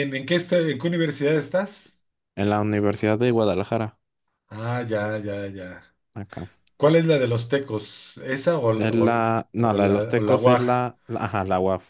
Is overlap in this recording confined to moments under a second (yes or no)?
no